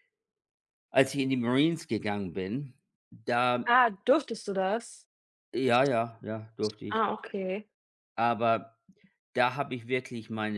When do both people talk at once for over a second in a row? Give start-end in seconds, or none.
none